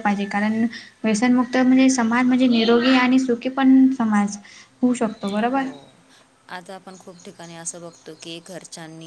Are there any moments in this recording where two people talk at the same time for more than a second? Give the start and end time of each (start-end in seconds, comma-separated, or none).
none